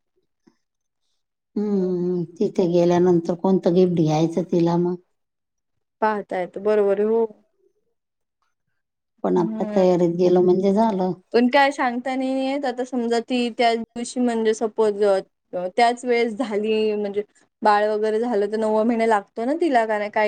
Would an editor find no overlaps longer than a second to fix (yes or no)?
yes